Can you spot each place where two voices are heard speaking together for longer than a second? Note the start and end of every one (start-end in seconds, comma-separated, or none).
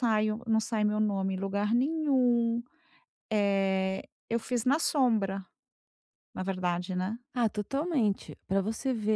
none